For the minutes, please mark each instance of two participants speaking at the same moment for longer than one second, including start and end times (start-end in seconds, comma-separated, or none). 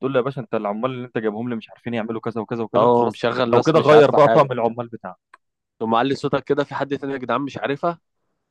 2.8-4.8